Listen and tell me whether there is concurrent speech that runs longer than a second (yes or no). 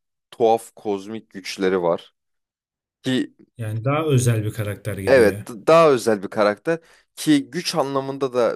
no